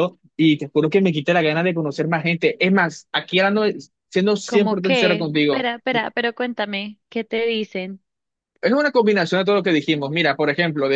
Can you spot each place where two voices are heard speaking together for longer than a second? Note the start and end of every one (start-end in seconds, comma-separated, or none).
4.4-5.7